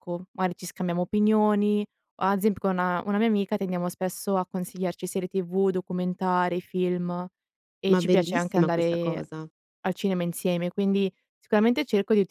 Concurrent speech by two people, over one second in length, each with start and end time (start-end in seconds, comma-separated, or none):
7.9-9.2